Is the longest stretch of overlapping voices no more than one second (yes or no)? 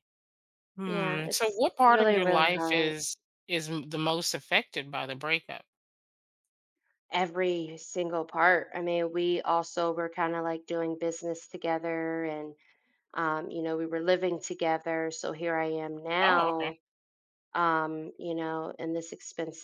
no